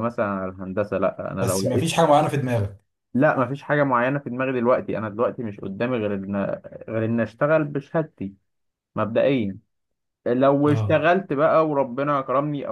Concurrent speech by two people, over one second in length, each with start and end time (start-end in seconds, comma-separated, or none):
none